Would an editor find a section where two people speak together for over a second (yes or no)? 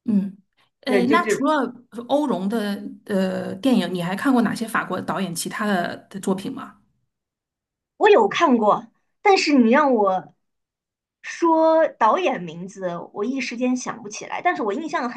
no